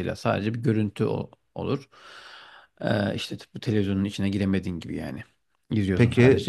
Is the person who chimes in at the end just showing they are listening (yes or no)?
no